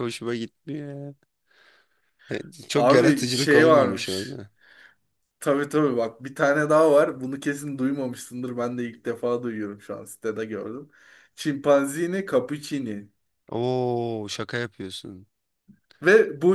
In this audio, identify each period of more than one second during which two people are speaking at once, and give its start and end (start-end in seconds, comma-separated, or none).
2.7-4.4